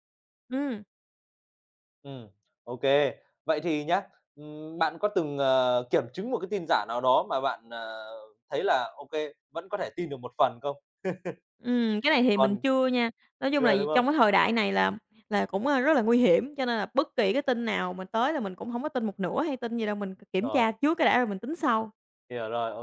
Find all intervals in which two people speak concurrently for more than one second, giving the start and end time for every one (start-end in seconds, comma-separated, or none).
none